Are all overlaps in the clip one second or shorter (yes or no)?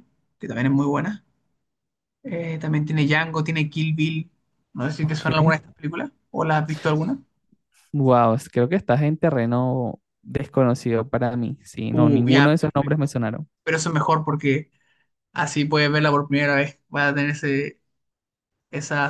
no